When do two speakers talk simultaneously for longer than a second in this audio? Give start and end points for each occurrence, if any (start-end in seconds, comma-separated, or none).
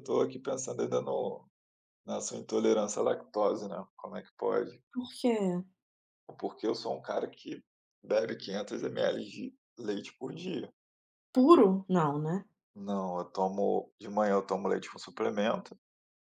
none